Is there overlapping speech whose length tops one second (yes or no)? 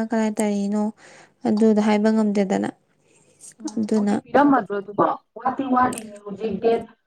no